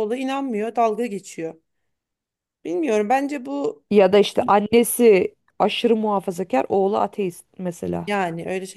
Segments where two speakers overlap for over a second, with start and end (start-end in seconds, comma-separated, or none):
none